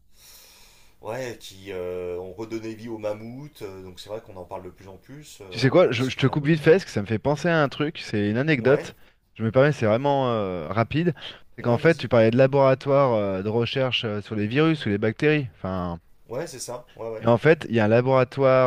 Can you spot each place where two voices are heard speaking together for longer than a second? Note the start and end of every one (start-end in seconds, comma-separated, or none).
5.5-6.8